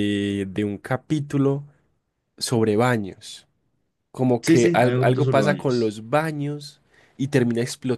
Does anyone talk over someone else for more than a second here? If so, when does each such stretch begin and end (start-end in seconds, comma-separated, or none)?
4.4-6.0